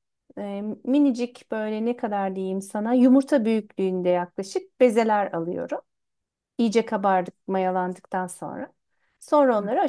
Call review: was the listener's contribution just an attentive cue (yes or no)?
yes